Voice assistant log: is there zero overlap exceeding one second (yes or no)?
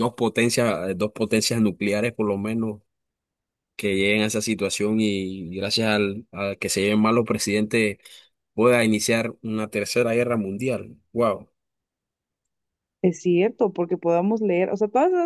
yes